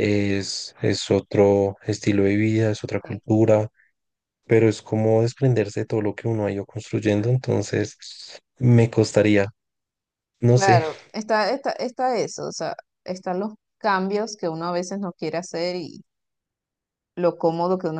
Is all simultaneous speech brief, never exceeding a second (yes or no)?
yes